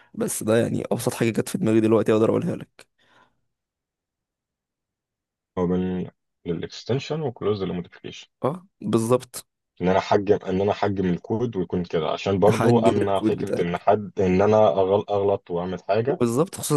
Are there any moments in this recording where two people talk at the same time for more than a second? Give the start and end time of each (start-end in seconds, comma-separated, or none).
12.5-13.9